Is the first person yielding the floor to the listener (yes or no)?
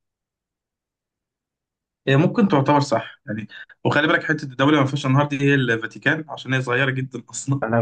yes